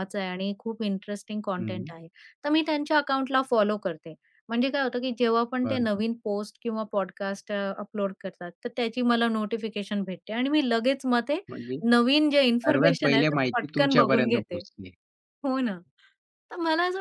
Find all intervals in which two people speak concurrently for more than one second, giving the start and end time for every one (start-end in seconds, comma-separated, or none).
12.4-14.6